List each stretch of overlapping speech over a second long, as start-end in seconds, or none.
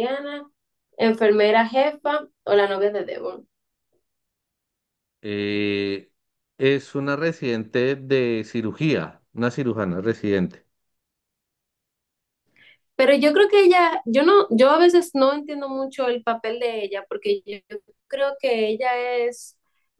none